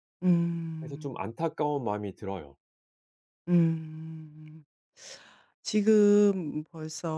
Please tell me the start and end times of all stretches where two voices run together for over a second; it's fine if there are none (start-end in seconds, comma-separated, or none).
none